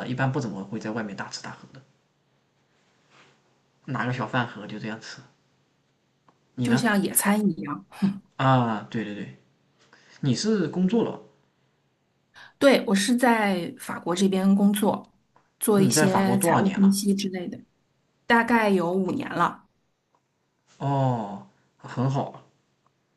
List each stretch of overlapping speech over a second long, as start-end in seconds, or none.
15.7-17.0